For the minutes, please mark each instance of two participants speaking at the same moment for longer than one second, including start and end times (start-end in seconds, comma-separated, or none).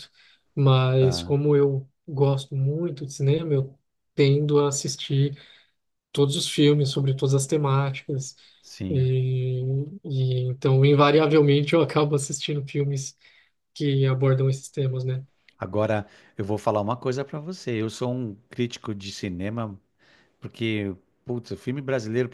none